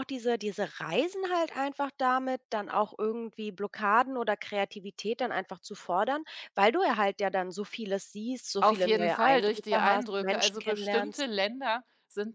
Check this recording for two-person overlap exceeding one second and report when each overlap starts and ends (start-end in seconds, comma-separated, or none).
8.6-11.2